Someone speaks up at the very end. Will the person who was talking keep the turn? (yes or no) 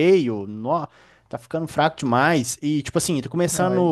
yes